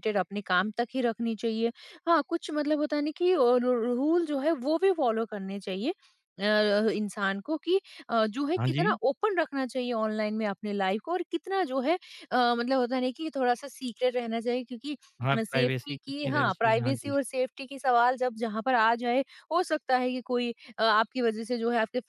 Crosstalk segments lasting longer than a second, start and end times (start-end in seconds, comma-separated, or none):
15.4-17.1